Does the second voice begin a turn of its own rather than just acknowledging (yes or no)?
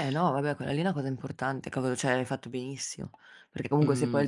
no